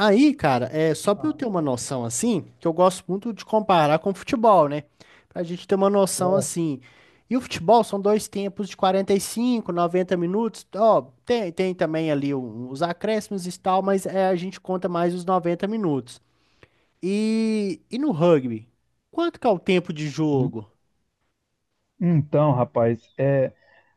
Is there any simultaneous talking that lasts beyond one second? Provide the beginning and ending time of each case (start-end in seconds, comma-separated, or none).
none